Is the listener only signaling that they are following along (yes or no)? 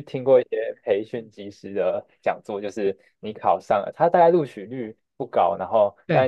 yes